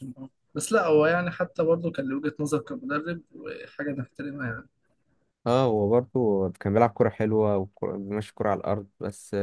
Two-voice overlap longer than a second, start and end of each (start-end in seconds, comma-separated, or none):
none